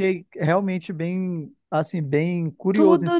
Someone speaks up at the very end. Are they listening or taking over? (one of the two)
taking over